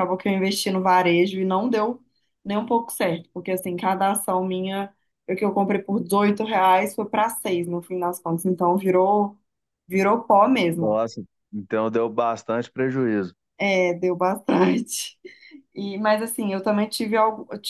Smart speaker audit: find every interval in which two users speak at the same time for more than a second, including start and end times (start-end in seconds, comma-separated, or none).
none